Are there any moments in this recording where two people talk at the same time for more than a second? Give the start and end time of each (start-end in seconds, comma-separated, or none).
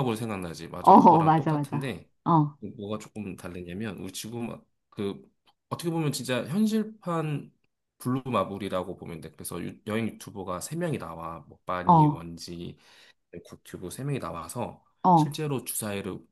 0.8-2.1